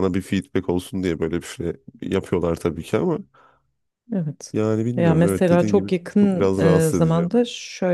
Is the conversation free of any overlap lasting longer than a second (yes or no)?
no